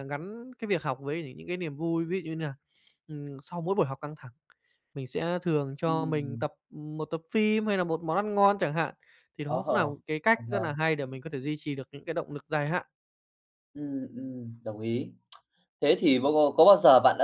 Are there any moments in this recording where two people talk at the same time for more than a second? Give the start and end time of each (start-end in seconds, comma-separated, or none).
none